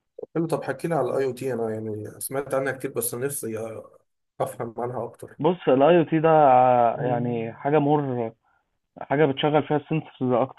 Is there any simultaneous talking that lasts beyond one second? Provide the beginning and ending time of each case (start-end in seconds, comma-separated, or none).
none